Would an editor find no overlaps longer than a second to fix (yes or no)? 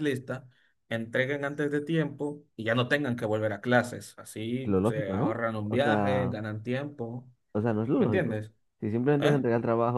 no